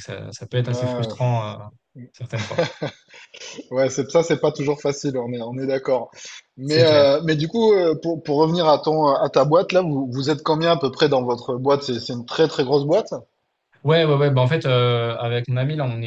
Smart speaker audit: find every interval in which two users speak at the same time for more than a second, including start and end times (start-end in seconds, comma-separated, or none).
none